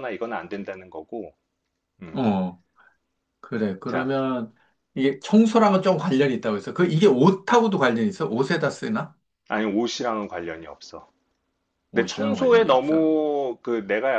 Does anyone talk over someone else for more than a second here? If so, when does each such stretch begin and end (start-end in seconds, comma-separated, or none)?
11.9-13.1